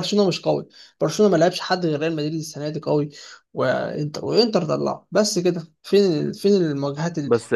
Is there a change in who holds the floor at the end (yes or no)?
yes